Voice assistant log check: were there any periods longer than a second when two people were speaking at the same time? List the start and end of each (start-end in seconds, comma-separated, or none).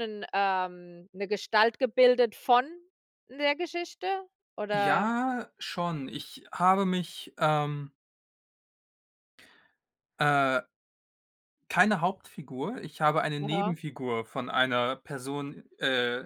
none